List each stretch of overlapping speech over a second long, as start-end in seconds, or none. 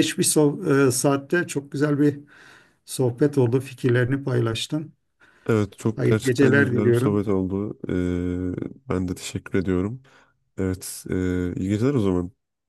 6.0-7.2